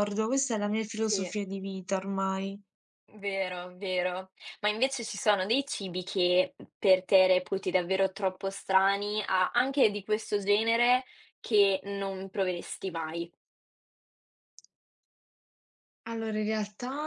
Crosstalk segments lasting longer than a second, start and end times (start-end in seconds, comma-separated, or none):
none